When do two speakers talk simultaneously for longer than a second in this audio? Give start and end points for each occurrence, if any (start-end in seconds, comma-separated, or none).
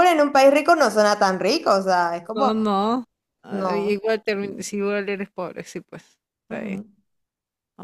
none